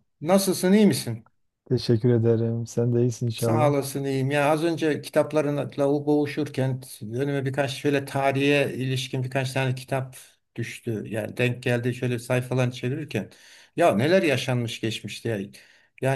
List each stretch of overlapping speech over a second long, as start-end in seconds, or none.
none